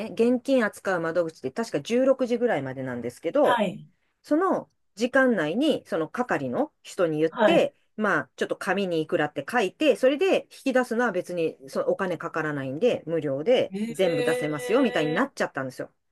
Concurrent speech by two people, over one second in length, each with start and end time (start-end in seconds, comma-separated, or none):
13.7-15.2